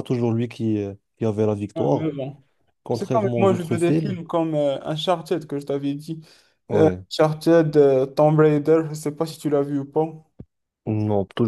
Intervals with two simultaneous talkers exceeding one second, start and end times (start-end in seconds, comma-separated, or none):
2.9-4.2